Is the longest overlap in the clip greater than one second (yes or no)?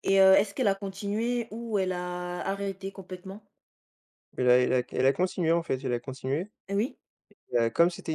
no